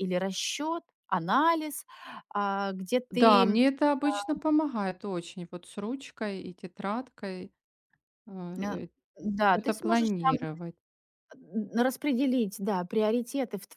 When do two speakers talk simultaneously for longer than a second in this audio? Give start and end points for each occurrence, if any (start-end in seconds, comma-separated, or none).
none